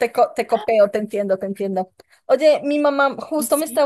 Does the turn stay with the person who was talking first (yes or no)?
yes